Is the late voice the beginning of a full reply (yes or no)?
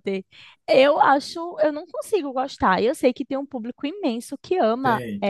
no